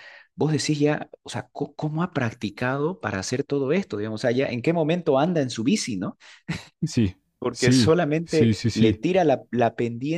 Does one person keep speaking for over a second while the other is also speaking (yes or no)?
yes